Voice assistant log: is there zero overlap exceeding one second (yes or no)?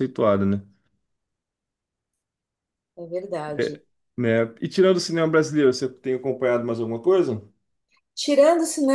yes